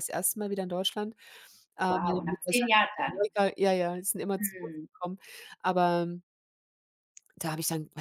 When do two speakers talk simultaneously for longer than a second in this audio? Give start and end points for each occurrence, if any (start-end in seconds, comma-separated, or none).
1.8-3.3